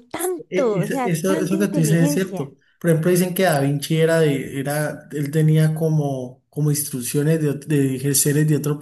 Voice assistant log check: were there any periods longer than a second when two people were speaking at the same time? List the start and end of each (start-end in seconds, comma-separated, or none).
0.5-2.5